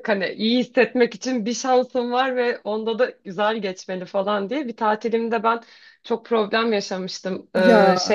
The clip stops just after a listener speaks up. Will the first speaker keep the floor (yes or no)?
yes